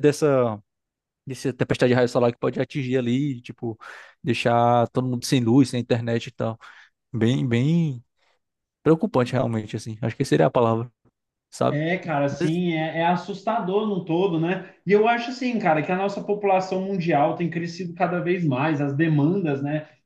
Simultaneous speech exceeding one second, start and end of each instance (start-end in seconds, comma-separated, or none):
none